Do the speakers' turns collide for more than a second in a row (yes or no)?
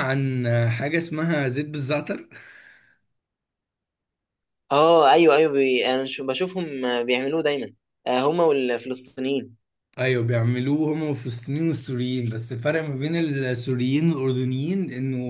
no